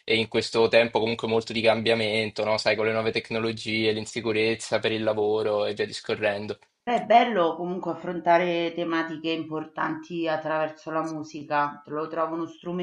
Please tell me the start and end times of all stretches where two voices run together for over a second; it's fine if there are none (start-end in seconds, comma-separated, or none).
none